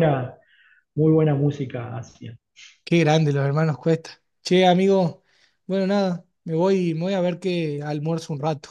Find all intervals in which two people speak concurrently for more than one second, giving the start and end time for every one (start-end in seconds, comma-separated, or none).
none